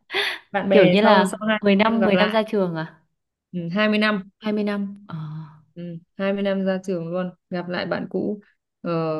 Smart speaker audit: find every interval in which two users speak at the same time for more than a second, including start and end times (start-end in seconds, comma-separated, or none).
0.7-2.4